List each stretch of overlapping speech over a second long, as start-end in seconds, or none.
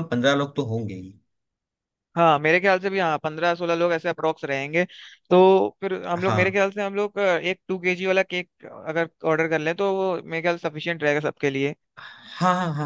none